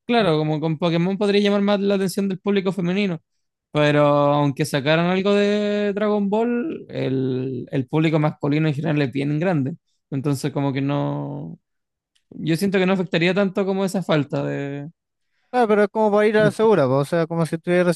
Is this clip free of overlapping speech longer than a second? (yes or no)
yes